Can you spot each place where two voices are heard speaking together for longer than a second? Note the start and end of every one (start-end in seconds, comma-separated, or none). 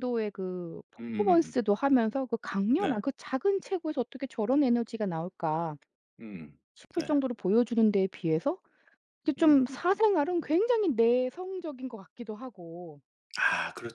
none